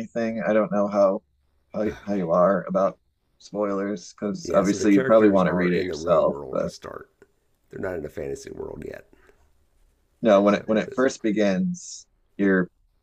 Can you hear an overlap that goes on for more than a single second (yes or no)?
yes